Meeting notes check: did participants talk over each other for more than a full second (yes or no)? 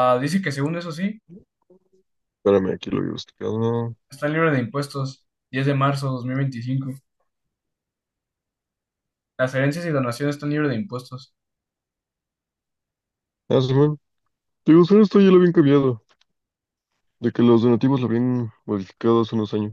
no